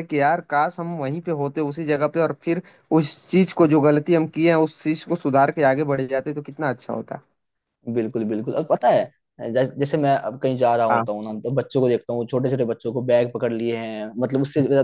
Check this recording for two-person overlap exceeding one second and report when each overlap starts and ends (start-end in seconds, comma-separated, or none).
none